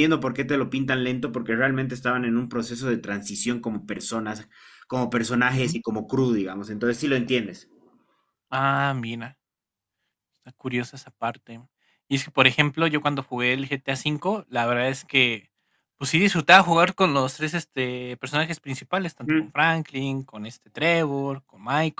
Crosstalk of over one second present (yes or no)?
no